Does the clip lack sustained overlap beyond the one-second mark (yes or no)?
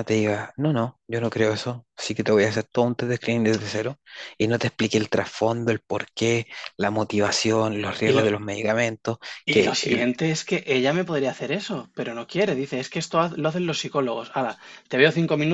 yes